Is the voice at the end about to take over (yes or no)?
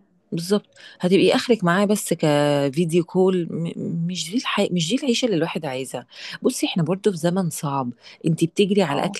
no